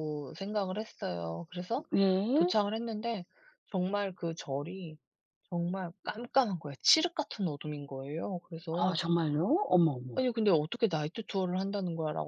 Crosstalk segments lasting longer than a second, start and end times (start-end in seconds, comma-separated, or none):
none